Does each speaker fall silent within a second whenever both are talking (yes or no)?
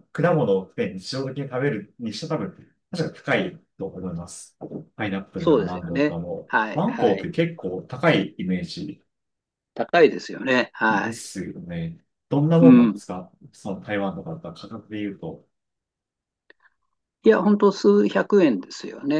no